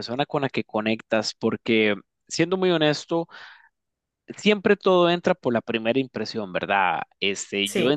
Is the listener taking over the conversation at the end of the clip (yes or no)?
no